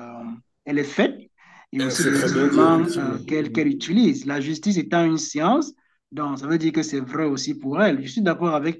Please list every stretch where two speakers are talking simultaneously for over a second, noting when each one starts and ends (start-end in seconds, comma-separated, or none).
1.8-3.7